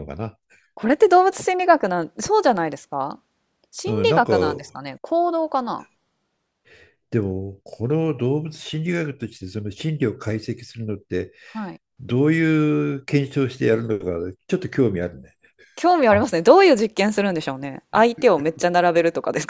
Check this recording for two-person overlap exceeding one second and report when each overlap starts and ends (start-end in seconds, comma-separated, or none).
none